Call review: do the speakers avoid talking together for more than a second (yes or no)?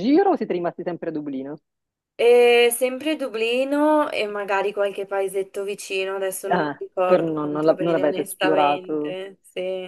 no